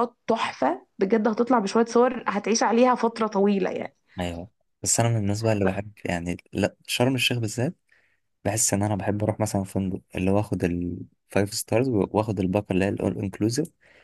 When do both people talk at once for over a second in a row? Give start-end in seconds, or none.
none